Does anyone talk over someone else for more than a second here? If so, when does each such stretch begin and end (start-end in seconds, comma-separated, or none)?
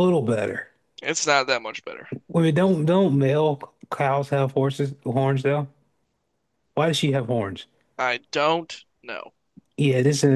none